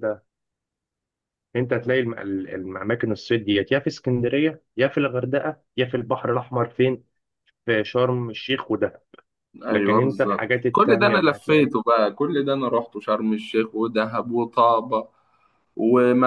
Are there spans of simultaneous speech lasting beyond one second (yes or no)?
yes